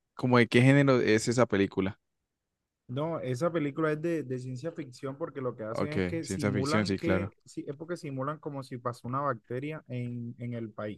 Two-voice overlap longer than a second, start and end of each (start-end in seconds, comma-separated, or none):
5.7-7.3